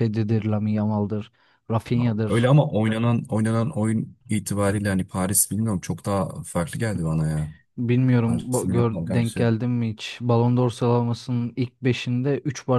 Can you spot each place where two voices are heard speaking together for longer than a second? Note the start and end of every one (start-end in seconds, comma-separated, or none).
8.3-9.5